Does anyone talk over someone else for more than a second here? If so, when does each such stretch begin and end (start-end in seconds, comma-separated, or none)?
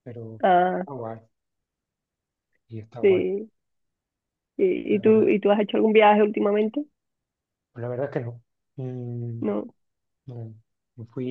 none